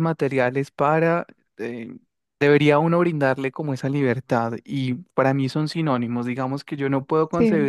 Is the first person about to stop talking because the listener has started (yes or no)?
no